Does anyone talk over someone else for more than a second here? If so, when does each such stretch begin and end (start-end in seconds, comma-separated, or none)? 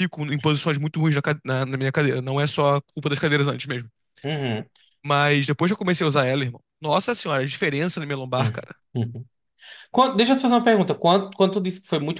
none